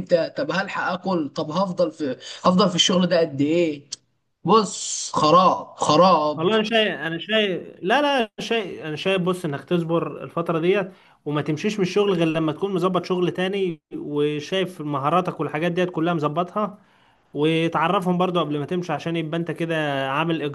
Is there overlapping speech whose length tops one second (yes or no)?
no